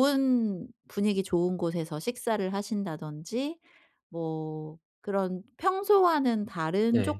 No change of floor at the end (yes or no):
yes